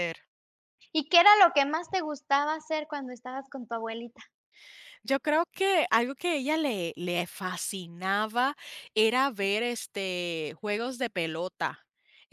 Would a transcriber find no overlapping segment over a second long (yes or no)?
yes